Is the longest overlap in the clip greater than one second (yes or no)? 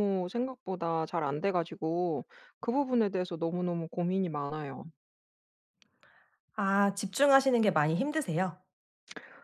no